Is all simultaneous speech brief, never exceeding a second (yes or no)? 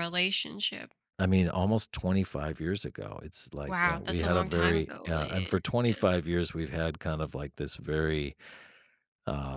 no